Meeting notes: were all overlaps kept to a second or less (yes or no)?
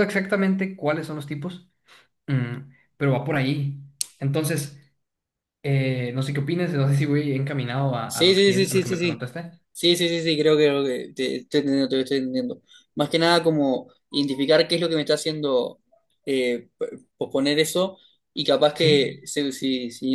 no